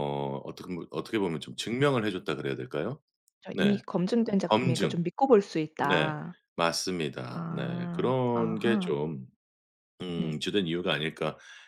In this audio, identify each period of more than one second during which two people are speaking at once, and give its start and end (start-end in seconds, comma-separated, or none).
7.3-8.9